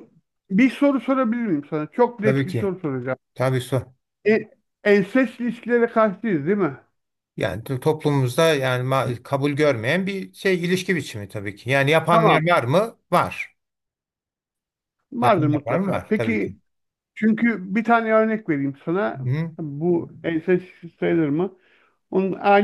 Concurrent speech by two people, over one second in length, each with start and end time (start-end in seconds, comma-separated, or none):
15.2-16.5